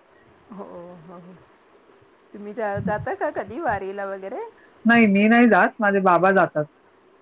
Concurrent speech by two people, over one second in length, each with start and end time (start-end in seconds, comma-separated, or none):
none